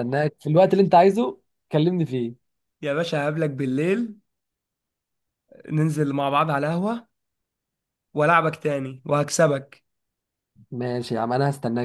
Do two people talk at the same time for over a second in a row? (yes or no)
no